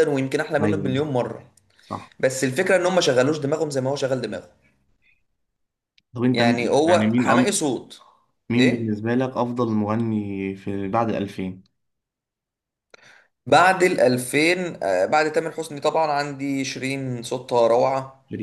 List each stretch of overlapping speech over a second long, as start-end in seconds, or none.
6.3-7.5